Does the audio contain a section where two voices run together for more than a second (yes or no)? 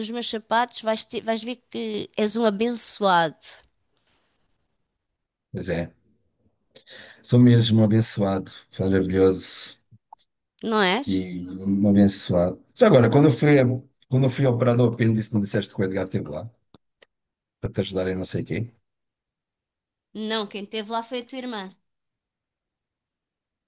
no